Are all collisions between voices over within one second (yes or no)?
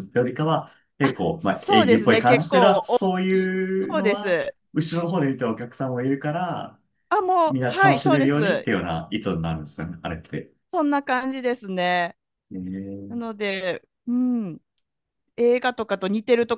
no